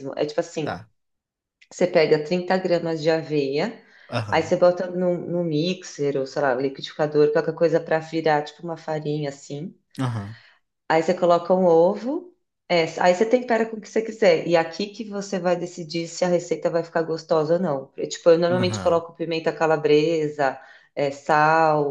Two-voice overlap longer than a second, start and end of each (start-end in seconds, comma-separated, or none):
none